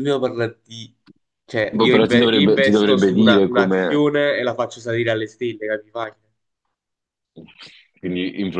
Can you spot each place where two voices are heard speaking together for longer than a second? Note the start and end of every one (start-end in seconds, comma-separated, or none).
1.7-4.0